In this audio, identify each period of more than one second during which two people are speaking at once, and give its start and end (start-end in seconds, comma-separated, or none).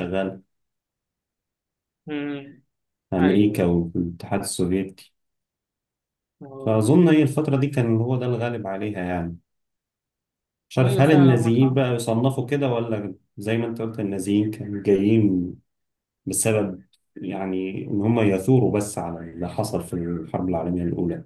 10.8-12.0